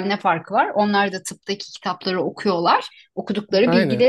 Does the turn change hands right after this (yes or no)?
no